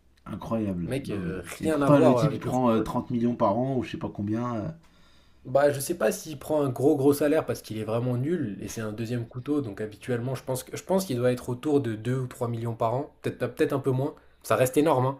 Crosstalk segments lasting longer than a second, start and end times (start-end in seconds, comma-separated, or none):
0.8-2.9